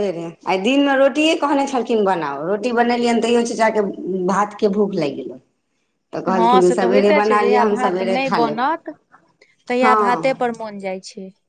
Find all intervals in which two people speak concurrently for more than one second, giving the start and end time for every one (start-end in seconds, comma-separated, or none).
6.3-8.6